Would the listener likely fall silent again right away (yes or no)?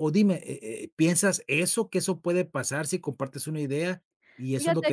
yes